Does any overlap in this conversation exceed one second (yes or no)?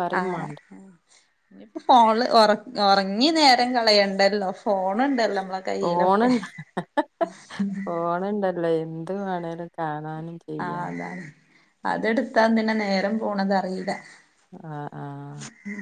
no